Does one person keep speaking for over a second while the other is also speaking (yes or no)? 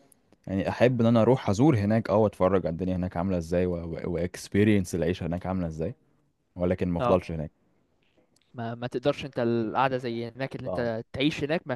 no